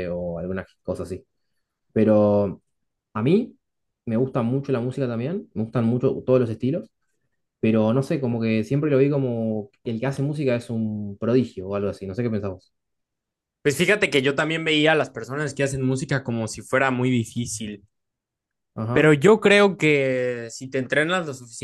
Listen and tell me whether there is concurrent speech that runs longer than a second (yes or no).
no